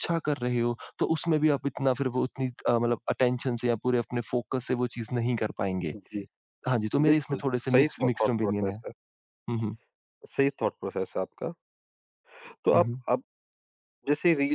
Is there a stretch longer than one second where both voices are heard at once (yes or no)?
yes